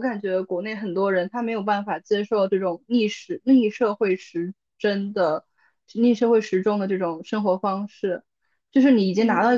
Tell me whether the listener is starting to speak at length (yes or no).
no